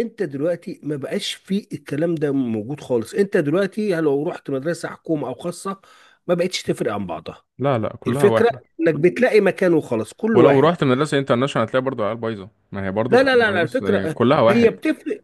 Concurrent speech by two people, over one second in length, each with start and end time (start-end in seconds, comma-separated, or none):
13.1-14.7